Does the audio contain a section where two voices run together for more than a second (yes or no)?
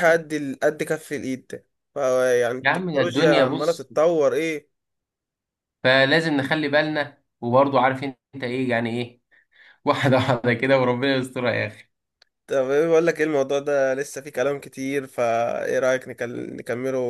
yes